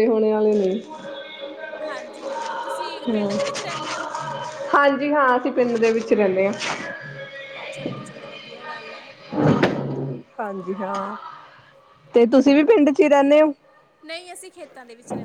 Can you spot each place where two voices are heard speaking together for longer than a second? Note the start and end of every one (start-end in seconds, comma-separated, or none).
none